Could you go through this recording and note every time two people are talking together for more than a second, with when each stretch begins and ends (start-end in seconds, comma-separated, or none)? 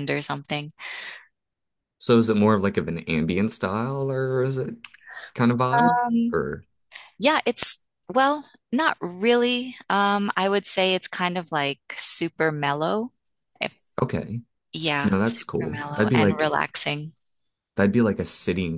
15.0-16.5